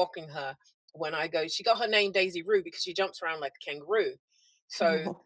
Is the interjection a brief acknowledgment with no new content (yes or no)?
yes